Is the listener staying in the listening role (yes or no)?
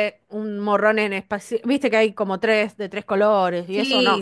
no